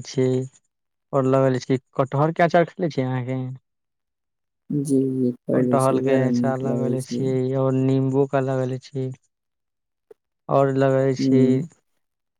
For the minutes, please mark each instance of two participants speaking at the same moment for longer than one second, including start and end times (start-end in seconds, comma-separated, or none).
5.5-7.2